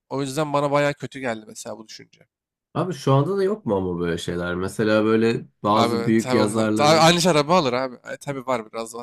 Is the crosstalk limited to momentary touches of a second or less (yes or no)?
no